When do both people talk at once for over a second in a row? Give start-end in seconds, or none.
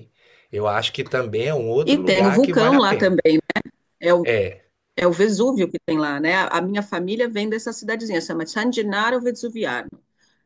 1.8-3.2